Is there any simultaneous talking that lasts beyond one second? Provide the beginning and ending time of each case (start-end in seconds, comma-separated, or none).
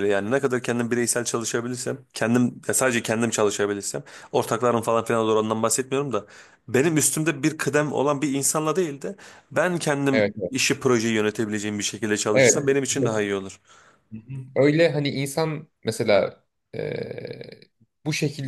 none